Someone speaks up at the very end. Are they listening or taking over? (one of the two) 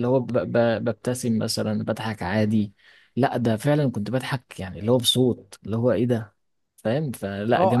taking over